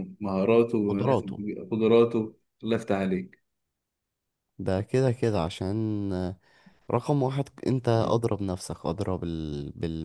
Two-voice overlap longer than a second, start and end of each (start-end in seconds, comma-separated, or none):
none